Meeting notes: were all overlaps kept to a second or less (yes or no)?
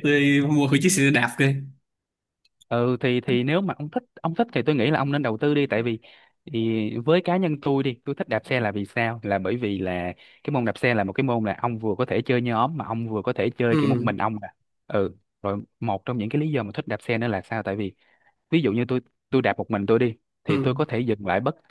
yes